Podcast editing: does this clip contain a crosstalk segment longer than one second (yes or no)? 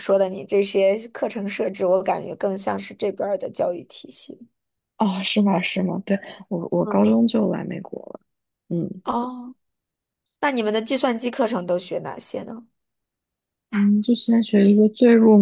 no